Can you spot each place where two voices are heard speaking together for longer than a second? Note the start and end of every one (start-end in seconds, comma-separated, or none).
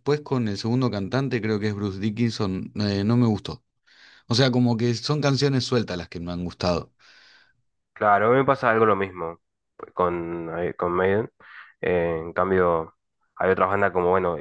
none